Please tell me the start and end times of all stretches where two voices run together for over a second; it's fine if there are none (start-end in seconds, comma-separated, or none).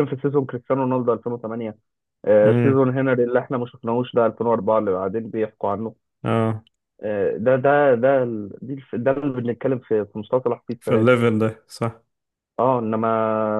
none